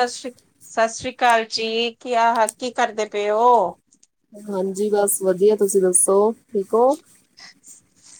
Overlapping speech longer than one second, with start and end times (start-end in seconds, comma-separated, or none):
none